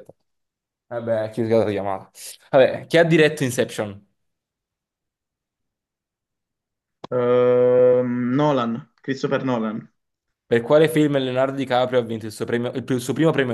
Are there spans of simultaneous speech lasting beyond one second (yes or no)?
no